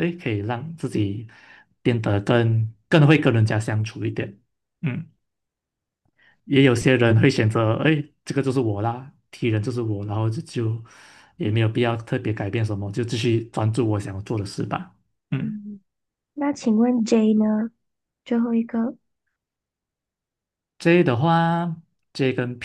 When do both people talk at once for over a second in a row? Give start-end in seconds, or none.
none